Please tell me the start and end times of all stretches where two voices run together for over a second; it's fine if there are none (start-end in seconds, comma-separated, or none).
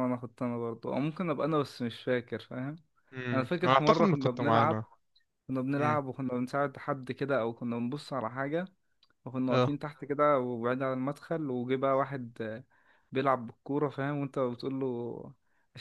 3.3-4.8